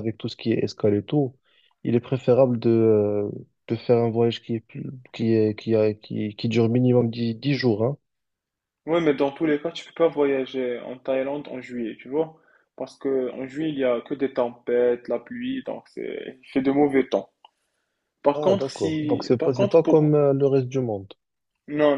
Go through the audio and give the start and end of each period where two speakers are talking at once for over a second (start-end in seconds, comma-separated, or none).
18.3-20.2